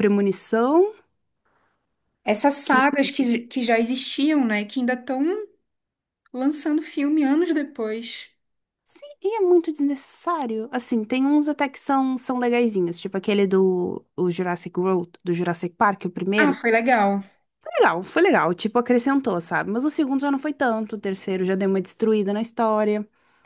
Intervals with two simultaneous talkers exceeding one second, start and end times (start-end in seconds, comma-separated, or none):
none